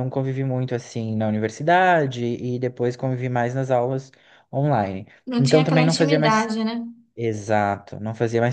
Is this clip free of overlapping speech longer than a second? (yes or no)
no